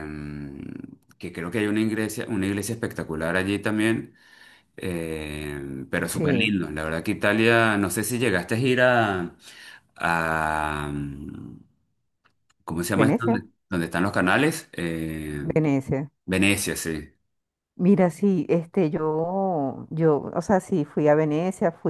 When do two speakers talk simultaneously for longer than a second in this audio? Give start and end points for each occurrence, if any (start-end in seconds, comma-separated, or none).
none